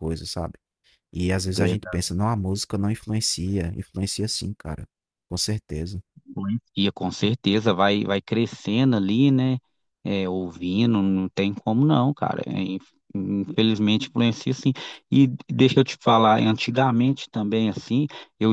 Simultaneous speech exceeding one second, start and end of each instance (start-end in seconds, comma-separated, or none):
none